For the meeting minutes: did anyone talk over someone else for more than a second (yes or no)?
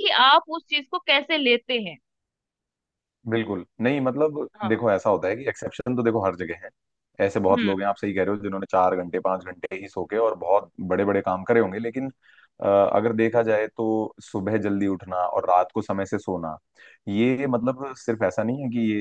no